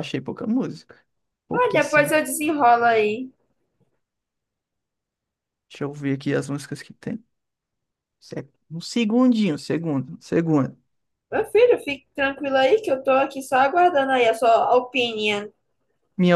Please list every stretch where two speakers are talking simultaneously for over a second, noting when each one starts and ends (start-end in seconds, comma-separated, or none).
none